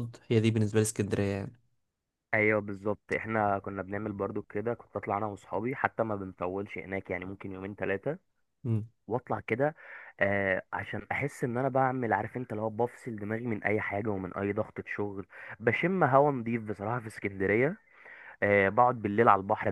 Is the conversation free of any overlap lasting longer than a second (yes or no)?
yes